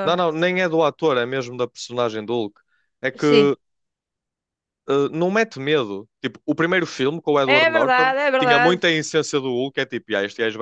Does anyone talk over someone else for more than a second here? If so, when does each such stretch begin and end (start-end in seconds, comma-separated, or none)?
7.4-8.8